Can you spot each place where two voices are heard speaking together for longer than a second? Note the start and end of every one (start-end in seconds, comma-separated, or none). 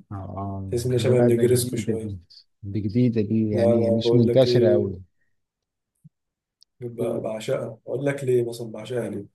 0.7-2.2, 3.5-5.0